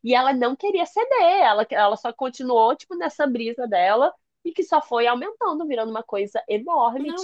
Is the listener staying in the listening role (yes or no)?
no